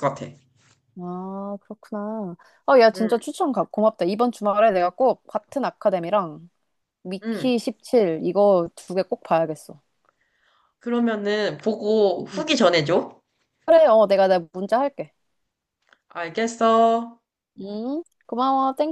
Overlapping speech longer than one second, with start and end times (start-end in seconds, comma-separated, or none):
none